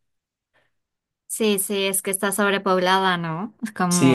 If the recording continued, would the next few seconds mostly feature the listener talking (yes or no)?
yes